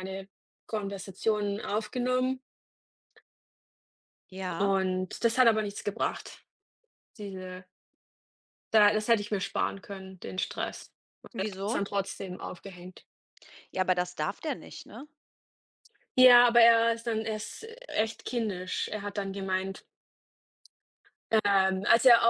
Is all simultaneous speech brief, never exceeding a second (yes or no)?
yes